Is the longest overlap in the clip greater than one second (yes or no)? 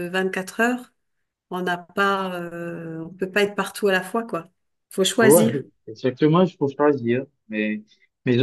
no